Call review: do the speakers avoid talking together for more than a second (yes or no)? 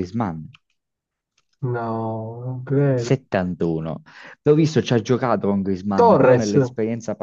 yes